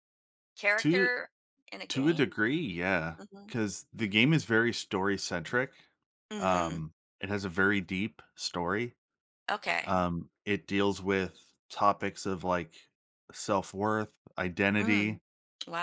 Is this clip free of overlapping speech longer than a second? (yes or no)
yes